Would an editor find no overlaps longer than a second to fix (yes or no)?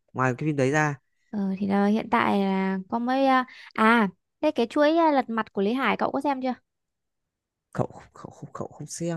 yes